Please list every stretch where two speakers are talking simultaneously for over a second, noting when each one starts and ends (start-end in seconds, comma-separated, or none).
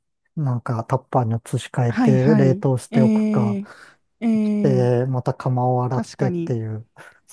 1.9-3.6